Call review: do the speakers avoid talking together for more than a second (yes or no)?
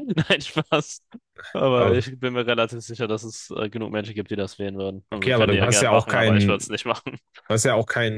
no